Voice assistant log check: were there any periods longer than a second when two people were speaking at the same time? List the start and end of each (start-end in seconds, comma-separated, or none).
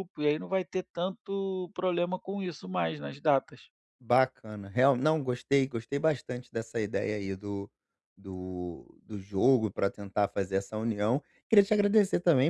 none